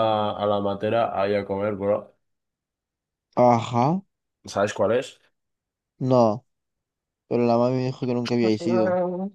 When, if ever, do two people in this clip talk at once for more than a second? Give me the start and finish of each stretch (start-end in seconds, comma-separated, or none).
none